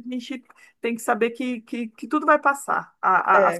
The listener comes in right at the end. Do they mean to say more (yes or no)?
no